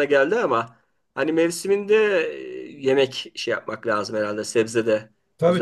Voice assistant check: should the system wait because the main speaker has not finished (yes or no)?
no